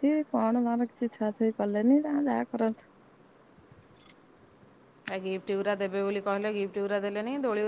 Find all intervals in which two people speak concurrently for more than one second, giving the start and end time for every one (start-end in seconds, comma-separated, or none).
none